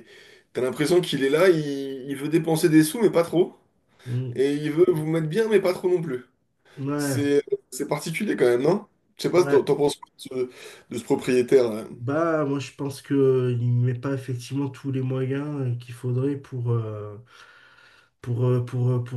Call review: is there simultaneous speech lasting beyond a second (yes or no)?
no